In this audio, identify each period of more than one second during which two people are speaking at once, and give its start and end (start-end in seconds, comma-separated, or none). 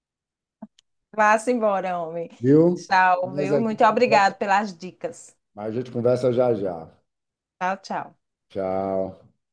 2.7-4.3